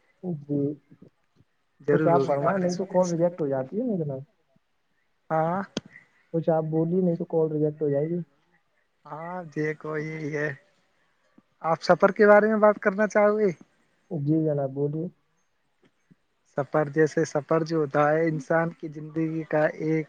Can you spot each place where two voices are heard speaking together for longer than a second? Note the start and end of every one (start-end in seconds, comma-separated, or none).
1.9-3.3